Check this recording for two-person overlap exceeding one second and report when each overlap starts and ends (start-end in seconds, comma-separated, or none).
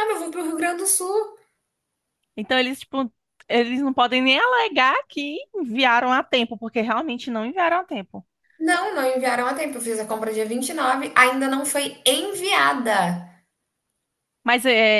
none